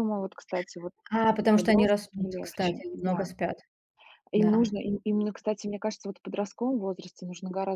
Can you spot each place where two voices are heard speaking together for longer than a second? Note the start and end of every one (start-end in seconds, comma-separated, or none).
1.3-3.3